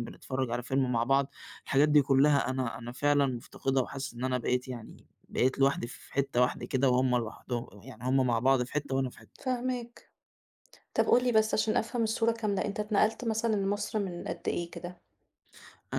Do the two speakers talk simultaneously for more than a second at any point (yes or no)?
no